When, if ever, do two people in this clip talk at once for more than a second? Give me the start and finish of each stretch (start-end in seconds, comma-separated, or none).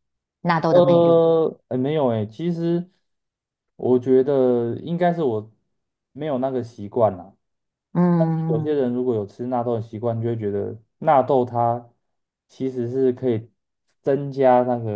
none